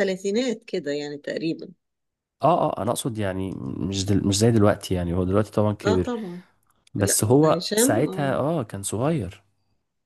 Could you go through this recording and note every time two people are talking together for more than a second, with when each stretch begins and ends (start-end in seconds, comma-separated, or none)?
7.0-8.3